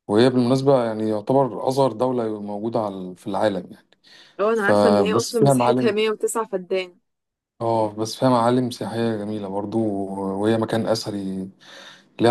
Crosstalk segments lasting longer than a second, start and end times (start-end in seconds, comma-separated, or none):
4.5-6.0